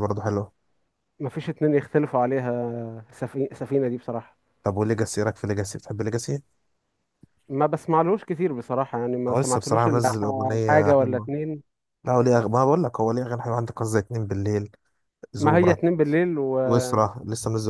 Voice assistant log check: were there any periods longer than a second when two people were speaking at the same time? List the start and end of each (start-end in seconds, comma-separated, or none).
9.3-11.3